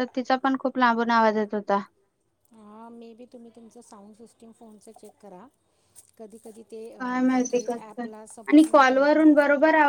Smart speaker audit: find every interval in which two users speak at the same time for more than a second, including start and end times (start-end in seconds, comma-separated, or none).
7.0-9.4